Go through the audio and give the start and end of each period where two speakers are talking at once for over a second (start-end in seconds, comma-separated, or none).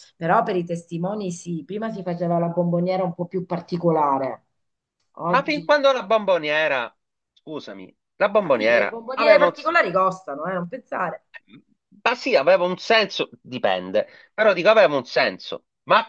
8.4-9.7